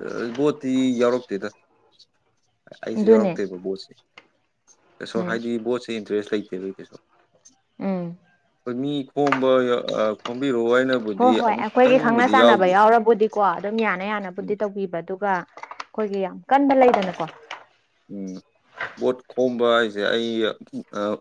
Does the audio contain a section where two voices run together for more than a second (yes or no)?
yes